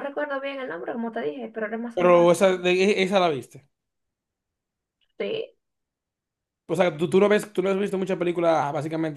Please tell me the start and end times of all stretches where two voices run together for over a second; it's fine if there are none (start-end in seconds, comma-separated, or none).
none